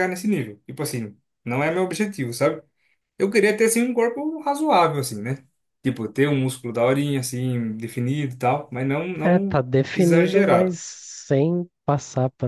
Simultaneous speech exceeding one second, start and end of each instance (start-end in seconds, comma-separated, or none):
9.2-10.8